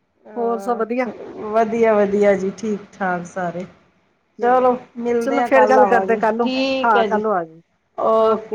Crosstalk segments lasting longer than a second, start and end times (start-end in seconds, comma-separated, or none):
5.2-7.2